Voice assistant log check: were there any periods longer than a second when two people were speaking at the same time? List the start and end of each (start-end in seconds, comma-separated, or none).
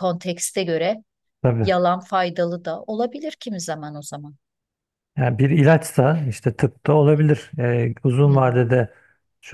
none